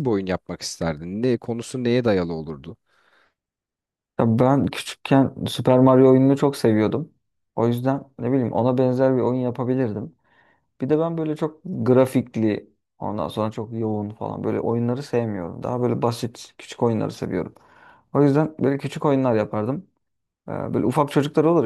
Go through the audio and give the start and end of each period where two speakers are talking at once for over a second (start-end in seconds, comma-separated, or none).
none